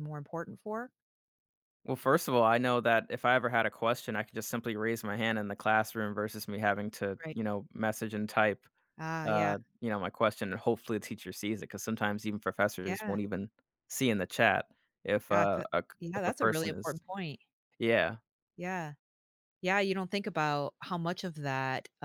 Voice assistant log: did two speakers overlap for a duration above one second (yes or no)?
yes